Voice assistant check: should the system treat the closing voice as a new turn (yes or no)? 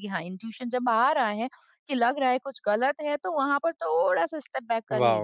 yes